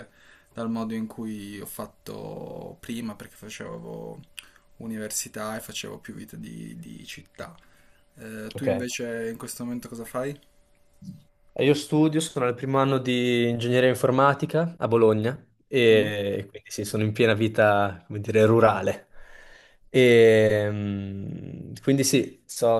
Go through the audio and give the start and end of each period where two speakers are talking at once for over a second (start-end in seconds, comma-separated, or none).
none